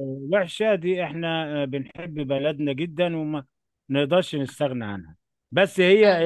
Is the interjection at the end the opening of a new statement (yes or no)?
no